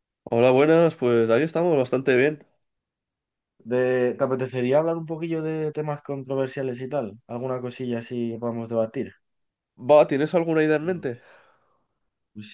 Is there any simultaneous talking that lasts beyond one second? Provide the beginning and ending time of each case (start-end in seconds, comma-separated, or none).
none